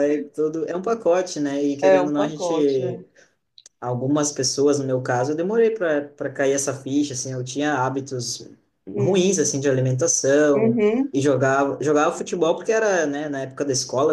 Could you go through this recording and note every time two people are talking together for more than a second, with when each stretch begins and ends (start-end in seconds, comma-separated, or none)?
1.8-3.0